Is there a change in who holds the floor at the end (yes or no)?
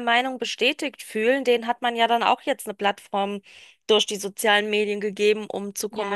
no